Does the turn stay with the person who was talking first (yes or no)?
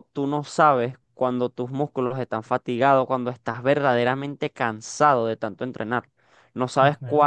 yes